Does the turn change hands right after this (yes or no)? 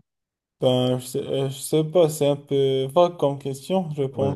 yes